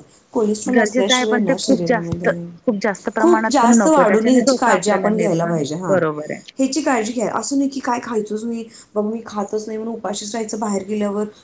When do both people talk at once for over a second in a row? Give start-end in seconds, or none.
0.7-2.3, 3.2-5.9